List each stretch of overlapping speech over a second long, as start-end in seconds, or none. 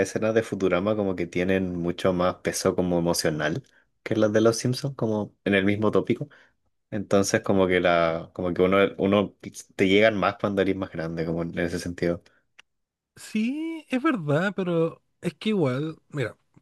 none